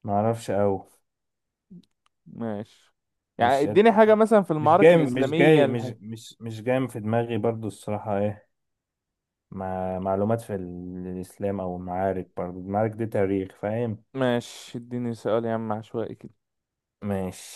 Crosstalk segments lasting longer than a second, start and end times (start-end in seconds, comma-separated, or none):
4.6-5.9